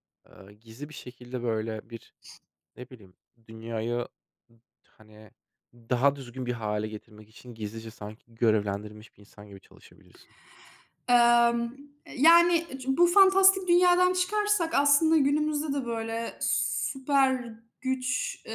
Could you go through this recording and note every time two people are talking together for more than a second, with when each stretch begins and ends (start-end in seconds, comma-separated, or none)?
none